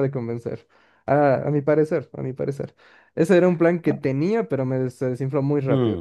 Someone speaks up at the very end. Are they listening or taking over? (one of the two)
taking over